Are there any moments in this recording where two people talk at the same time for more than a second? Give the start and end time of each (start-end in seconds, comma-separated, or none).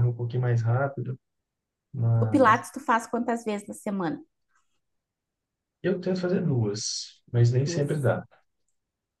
none